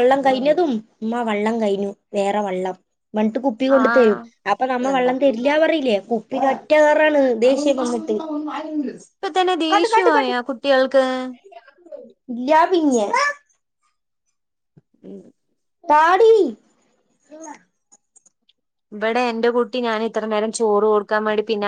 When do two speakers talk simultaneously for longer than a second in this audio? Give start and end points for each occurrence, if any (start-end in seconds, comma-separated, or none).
none